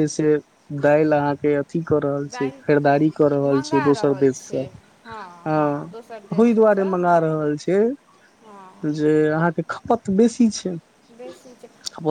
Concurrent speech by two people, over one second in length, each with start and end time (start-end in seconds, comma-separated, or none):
2.3-4.6